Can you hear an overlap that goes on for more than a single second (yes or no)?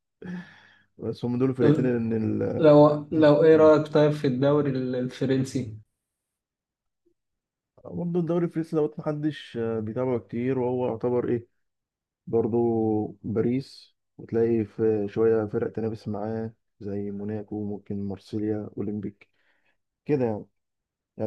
no